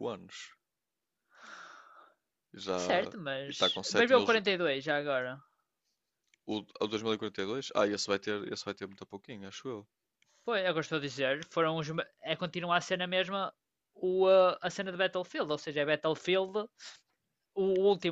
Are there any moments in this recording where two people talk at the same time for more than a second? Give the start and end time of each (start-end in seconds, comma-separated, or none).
2.7-4.4